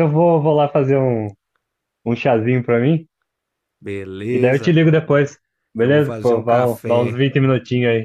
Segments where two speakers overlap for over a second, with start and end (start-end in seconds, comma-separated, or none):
5.8-7.2